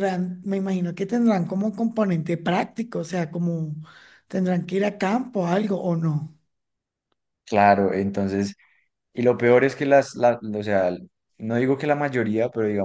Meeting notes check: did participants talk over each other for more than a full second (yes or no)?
no